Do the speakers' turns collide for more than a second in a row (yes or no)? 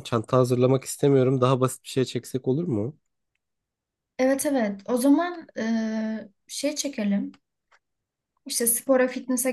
no